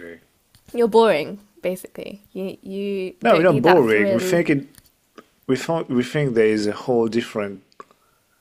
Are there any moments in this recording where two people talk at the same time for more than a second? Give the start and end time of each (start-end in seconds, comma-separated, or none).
3.2-4.4